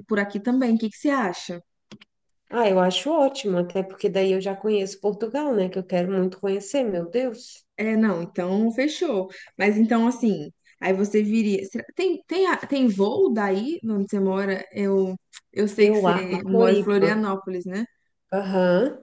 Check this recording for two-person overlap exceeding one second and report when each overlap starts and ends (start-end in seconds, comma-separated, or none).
15.8-17.2